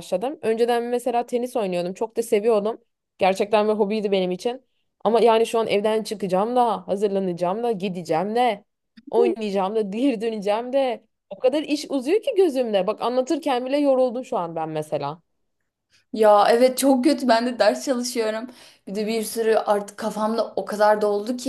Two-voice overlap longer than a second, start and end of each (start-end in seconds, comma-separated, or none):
none